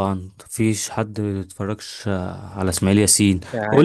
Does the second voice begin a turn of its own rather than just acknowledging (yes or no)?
no